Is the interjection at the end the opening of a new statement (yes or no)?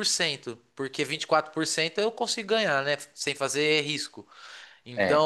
no